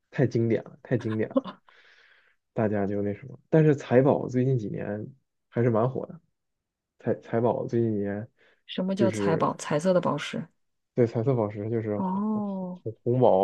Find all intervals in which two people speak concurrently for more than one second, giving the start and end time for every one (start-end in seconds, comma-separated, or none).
none